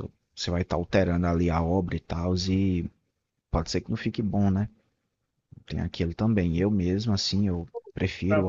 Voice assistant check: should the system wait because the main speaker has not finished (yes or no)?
yes